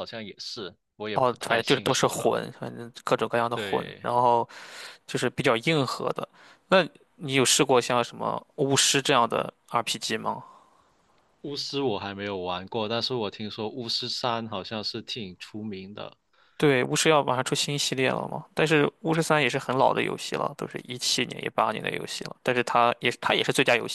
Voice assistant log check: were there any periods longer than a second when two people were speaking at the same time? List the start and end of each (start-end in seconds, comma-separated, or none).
1.1-2.4